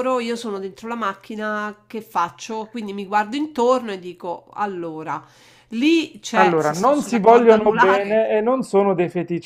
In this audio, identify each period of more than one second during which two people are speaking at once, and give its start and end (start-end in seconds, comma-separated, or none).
6.4-8.2